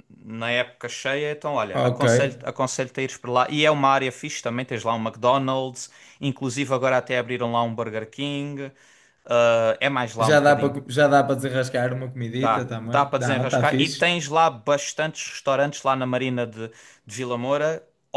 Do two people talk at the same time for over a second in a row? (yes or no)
yes